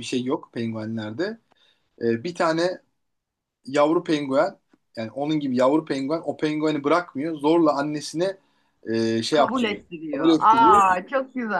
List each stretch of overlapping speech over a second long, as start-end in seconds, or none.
9.3-10.7